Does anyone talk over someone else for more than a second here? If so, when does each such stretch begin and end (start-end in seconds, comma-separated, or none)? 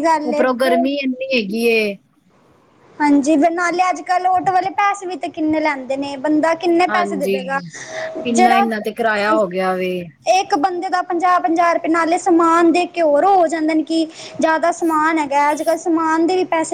none